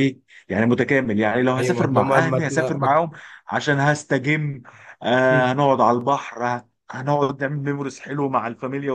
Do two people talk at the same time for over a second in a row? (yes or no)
yes